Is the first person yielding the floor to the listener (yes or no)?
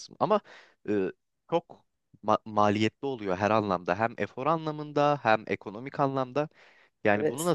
no